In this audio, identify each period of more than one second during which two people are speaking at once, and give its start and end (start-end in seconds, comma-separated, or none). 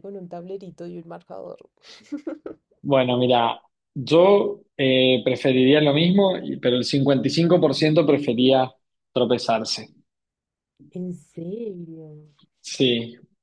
none